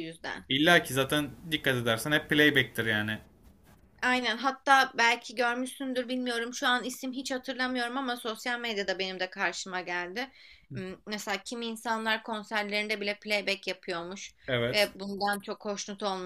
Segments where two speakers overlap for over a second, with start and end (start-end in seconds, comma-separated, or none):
none